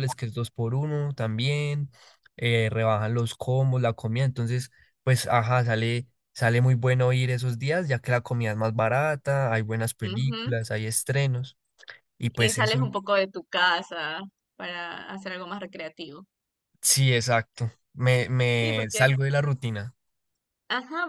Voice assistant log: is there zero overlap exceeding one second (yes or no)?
yes